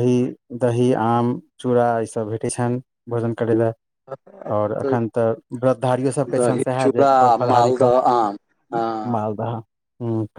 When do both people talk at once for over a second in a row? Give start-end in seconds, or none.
6.3-7.9